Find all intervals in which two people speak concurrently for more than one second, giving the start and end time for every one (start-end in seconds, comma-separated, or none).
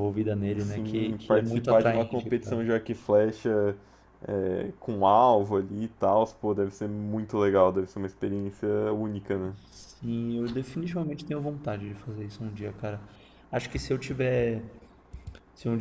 0.6-2.6